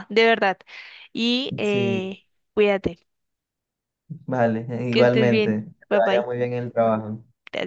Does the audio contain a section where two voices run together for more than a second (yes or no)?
yes